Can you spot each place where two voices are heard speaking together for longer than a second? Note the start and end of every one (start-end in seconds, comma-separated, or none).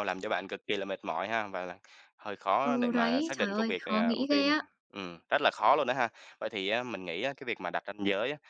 2.6-4.5